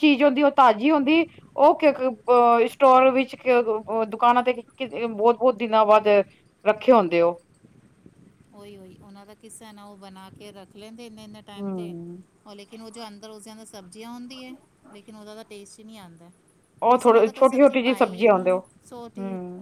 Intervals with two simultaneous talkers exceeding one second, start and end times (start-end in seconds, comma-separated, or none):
16.9-18.7